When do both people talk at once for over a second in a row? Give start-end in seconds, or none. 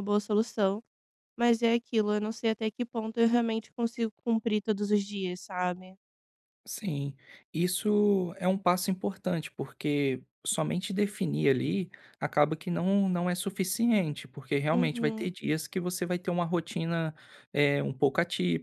none